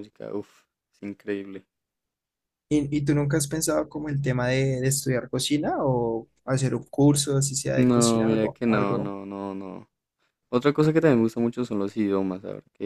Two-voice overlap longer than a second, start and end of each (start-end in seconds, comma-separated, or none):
7.7-9.1